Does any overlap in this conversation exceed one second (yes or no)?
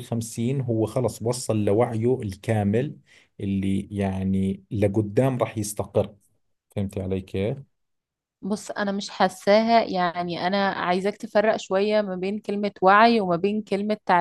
no